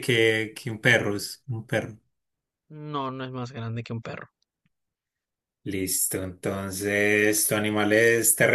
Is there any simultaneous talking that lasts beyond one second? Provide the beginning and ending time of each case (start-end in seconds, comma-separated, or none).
none